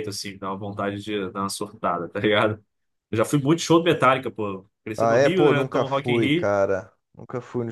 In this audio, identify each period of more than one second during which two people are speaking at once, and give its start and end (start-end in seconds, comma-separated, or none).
5.0-6.5